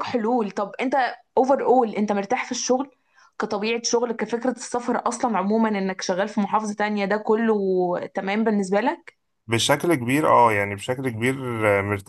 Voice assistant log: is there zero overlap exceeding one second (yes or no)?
yes